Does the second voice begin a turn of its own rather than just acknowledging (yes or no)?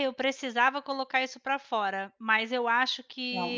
no